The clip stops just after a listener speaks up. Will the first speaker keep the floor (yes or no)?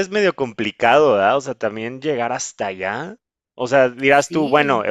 yes